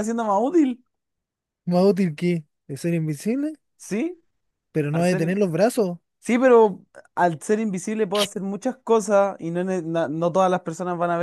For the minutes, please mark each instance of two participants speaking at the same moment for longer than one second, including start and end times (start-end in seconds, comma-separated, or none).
none